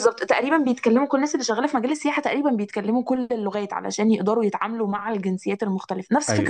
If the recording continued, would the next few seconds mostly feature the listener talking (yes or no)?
yes